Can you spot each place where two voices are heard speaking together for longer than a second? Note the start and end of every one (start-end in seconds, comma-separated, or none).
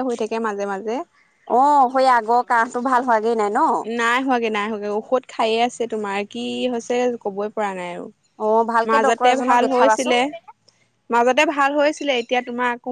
8.9-10.2